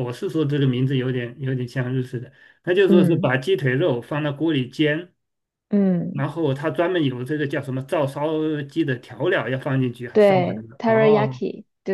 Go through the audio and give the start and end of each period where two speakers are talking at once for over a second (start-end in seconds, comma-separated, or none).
10.1-11.4